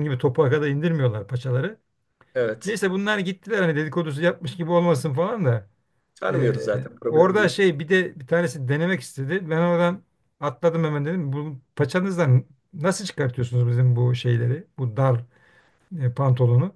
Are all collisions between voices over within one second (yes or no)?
no